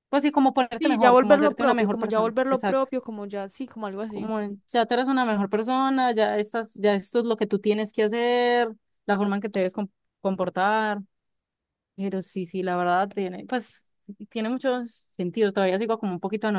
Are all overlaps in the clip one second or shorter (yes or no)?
no